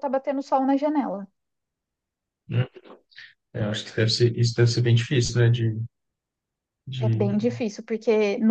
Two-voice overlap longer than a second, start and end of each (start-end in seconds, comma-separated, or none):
none